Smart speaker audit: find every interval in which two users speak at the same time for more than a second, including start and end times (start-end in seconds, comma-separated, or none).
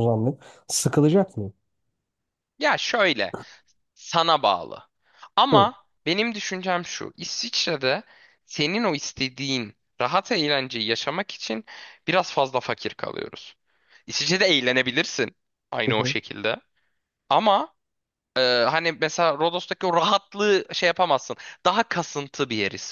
none